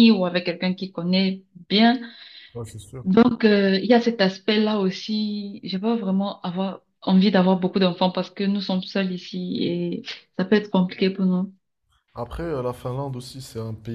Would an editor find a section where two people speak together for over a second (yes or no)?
no